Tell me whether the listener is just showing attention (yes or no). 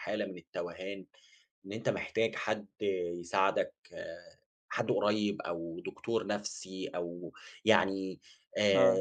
yes